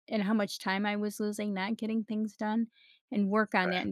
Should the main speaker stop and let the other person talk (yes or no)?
no